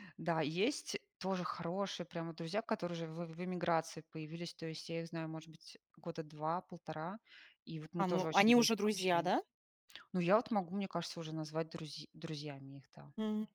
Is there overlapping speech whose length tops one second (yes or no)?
yes